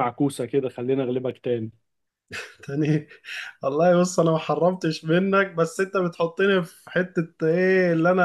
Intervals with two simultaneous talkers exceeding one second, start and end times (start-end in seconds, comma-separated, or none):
none